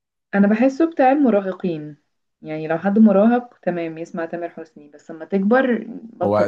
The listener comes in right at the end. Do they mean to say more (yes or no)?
yes